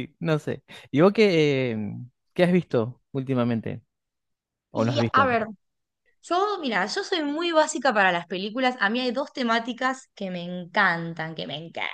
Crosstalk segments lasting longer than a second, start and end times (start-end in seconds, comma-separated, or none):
none